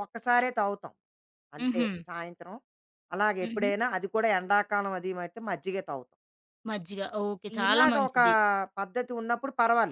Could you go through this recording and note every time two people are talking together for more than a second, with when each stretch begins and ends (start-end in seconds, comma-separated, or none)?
none